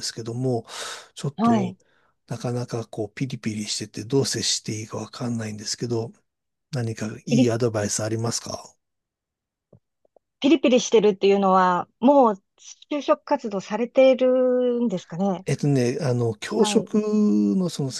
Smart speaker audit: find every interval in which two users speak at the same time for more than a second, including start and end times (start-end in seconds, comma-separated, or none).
none